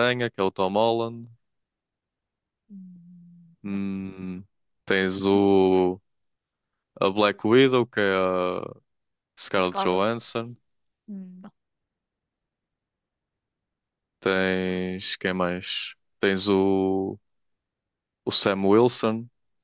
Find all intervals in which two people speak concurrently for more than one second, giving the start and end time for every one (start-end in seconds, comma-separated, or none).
none